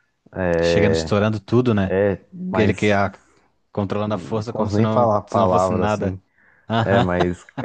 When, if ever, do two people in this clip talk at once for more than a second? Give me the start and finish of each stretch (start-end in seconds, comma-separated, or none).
4.1-6.2